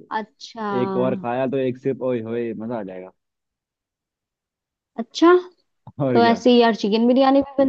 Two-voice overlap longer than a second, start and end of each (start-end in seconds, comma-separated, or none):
none